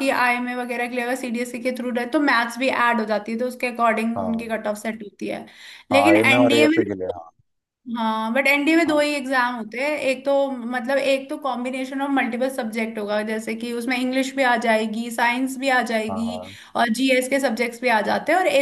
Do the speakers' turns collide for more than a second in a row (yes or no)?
yes